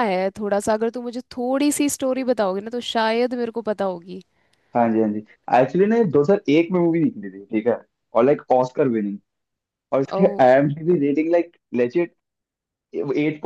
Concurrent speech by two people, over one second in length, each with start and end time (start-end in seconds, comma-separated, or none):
none